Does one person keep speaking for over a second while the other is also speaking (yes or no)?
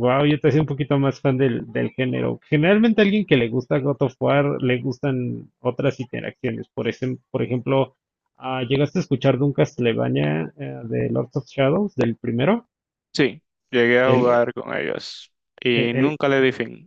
no